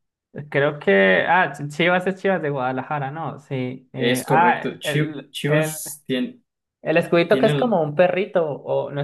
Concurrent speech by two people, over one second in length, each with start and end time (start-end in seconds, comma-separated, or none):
4.0-5.7